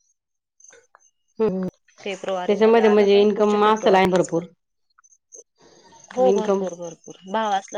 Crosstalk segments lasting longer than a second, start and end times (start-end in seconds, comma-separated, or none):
2.0-4.4